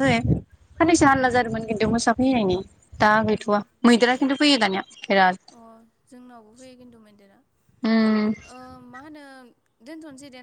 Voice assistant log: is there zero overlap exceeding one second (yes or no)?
yes